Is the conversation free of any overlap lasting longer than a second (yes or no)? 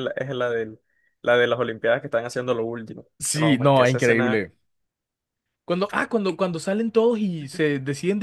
no